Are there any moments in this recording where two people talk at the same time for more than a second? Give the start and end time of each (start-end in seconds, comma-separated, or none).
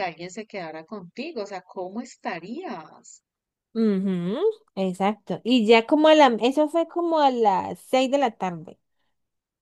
none